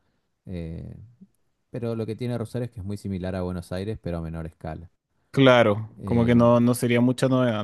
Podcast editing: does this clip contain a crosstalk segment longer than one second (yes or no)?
no